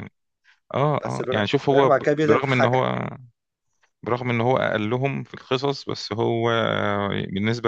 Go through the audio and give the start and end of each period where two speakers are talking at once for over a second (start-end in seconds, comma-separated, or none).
1.0-3.0